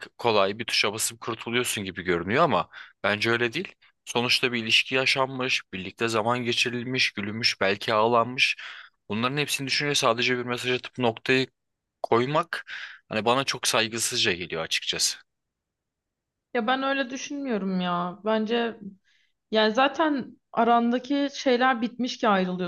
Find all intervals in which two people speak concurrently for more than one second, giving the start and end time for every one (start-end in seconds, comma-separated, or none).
none